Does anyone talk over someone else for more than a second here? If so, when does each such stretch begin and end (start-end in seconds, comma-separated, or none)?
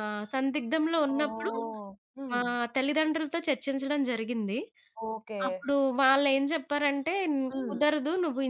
none